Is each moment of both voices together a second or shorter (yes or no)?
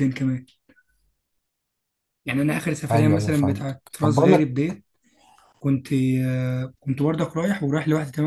no